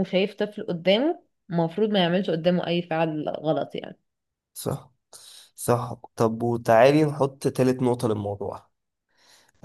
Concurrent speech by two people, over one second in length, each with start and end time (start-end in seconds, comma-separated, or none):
none